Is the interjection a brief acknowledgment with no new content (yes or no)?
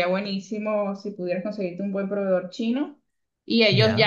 yes